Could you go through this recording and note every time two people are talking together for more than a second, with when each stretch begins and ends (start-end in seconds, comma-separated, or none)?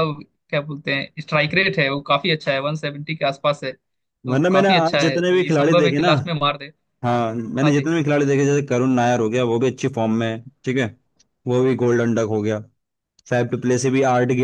4.2-6.1